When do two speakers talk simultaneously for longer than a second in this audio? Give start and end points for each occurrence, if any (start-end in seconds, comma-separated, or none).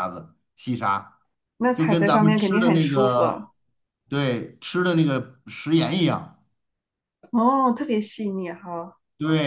1.7-3.2